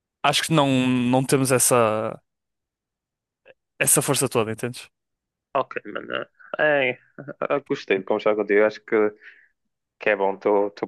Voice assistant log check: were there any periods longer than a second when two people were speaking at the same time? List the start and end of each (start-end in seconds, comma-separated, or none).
none